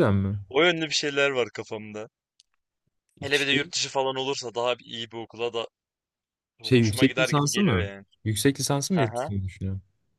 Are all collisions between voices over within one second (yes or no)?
no